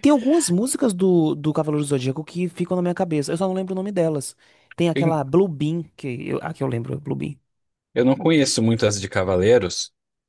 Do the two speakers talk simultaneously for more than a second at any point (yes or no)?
no